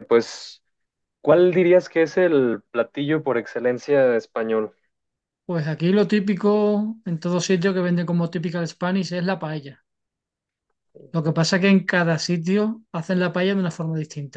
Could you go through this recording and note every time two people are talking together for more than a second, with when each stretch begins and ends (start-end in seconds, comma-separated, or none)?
none